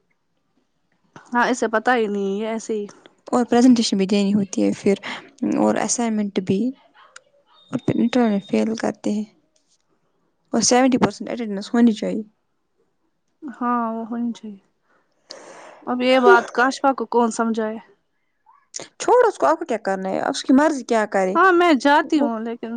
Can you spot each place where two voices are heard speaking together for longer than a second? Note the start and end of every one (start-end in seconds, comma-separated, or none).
none